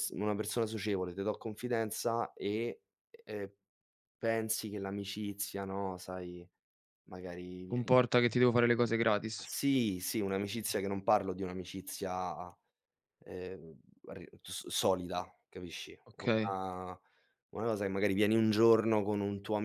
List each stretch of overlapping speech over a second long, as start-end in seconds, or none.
none